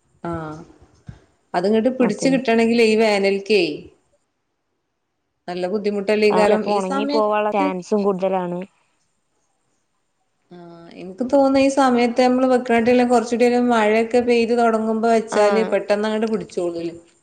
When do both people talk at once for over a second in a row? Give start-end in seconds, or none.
none